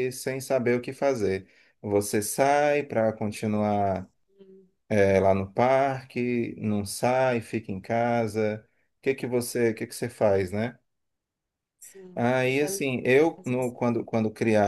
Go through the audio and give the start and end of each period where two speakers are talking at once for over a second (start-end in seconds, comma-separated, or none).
12.2-13.8